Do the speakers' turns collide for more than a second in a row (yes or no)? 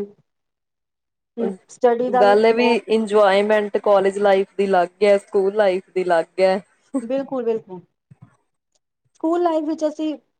no